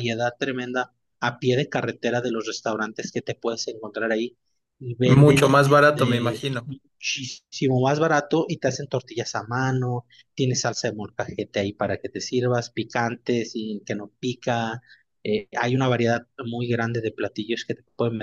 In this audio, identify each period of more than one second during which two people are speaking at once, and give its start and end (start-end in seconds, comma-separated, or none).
5.1-6.7